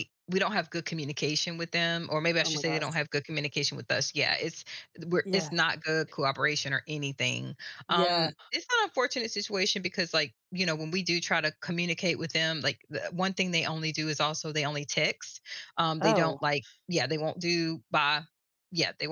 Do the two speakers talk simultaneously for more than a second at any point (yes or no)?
no